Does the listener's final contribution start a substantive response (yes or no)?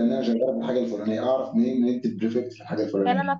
yes